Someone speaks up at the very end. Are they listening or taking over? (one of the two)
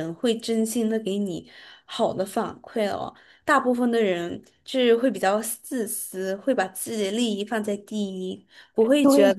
taking over